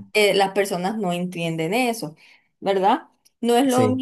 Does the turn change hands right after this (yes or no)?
no